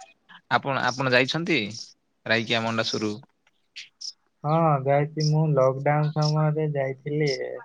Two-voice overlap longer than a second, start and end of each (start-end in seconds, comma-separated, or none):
none